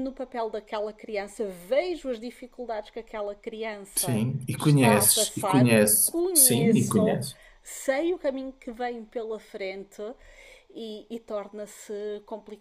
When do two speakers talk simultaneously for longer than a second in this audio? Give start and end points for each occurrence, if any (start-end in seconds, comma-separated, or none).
4.0-7.2